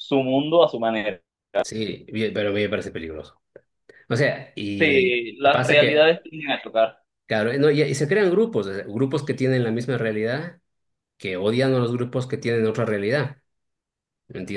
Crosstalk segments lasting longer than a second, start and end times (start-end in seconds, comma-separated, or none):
4.8-6.2